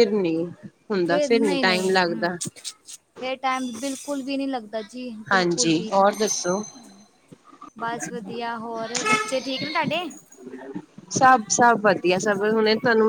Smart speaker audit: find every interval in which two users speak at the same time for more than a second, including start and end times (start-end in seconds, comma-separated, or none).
5.3-6.6